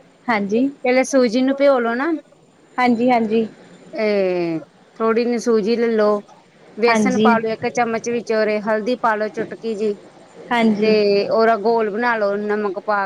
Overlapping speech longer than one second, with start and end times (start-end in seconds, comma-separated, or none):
none